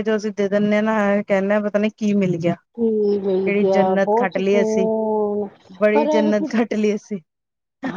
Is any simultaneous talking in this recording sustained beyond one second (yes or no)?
yes